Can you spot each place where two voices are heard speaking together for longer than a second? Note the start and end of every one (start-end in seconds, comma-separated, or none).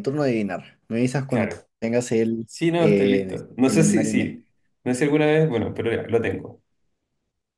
2.4-4.4